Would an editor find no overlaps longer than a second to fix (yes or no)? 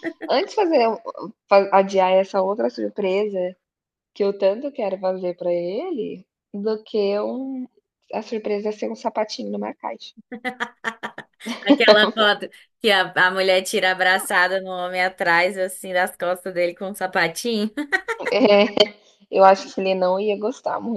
yes